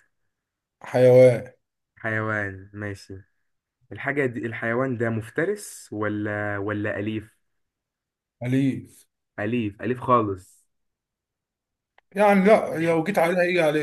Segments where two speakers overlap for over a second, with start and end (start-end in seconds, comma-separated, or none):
none